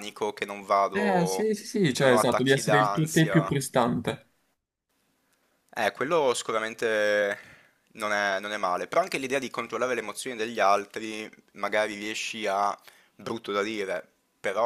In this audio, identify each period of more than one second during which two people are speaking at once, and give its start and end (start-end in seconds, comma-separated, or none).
0.9-3.5